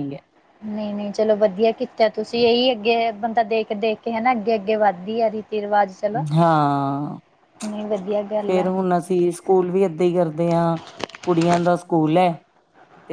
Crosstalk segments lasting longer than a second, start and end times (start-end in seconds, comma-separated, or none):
none